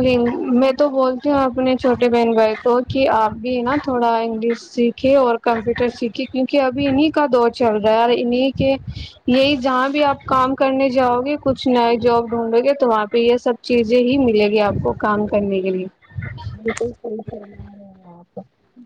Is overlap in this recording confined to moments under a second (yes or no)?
yes